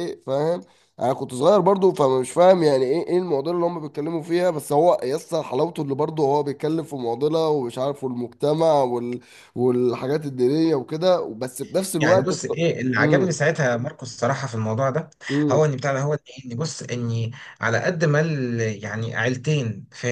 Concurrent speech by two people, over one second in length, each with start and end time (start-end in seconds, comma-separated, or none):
12.0-13.4